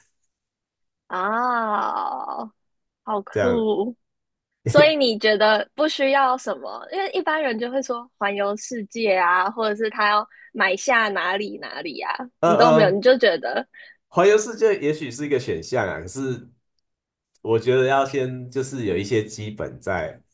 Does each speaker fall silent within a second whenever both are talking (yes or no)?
yes